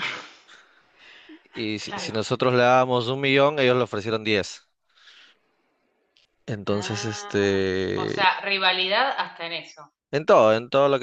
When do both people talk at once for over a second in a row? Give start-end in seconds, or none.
6.7-8.3